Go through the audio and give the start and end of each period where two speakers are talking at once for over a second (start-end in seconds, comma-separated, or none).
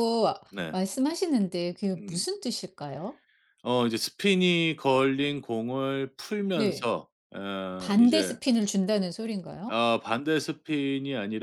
none